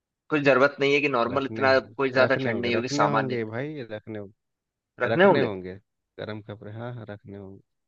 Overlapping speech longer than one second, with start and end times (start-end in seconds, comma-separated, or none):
1.3-3.4